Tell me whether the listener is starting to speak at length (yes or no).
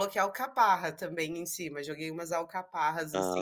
yes